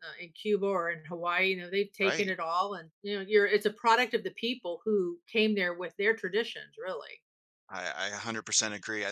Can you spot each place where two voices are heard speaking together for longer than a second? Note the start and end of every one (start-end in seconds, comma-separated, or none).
none